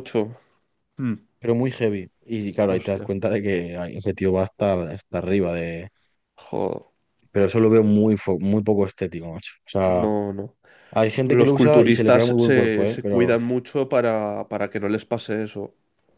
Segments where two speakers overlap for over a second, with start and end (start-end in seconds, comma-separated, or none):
11.2-13.4